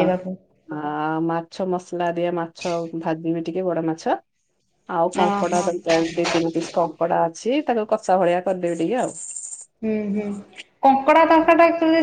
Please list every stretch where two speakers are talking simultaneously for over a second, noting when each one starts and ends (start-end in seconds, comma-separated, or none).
none